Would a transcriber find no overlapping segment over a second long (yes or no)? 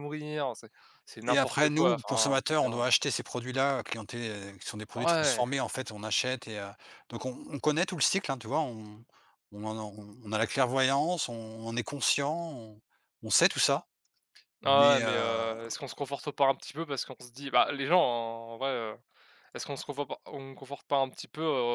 no